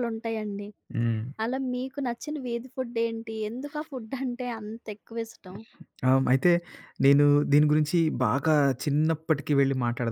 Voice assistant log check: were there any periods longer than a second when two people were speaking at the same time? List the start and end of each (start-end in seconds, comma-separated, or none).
none